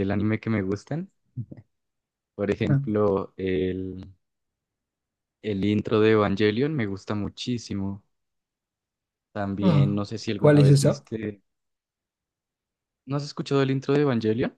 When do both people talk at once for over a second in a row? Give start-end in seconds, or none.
9.6-11.1